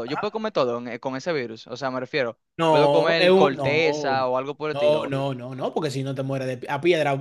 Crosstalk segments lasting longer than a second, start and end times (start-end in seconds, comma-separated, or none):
2.6-3.8